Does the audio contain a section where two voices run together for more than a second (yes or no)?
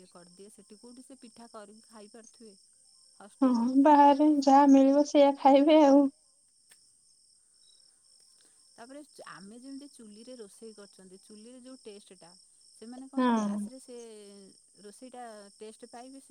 no